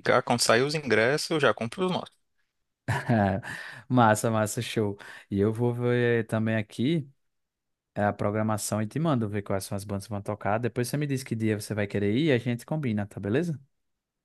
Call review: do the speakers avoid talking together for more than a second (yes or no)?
yes